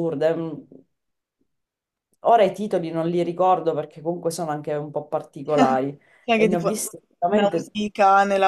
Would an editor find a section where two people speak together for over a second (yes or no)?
yes